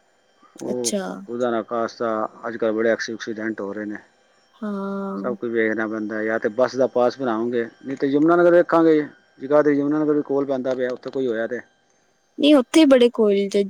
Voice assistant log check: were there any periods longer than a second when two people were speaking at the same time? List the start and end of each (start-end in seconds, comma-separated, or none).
none